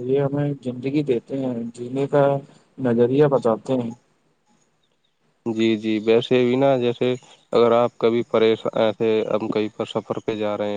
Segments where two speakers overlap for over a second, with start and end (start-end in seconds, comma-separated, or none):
none